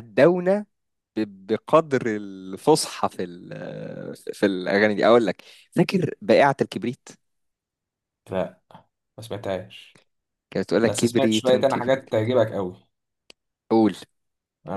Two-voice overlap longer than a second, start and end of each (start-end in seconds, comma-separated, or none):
10.8-12.1